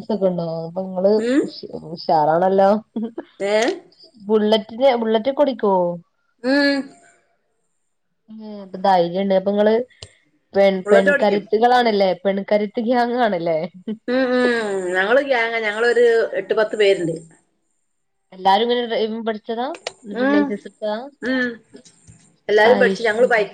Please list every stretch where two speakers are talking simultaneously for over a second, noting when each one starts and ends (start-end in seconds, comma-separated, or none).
none